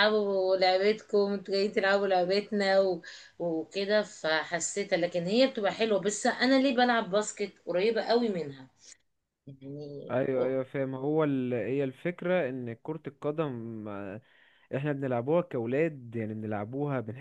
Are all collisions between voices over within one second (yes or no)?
yes